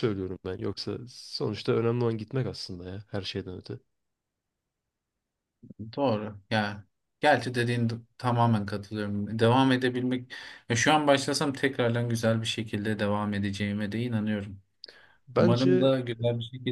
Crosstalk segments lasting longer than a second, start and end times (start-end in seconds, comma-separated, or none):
none